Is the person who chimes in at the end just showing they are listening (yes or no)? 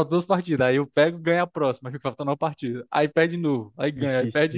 yes